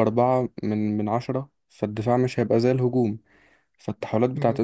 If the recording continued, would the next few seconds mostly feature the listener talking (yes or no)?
no